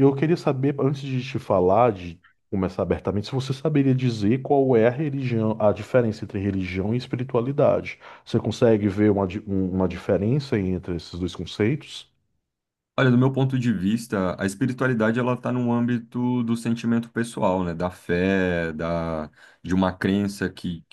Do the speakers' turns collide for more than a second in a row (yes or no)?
no